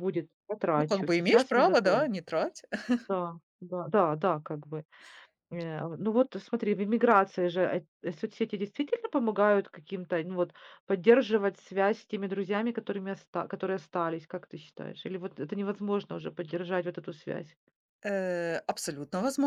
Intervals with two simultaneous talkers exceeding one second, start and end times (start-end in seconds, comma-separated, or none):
0.7-2.1